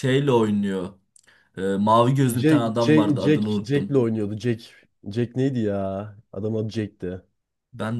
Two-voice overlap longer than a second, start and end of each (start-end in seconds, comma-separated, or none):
2.3-4.0